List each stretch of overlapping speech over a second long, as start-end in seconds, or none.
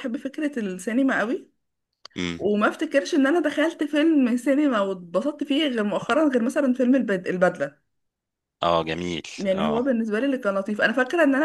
none